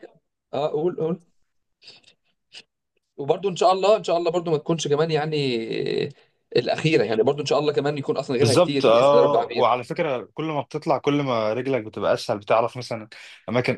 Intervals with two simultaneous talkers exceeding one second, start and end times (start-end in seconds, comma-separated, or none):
8.4-9.6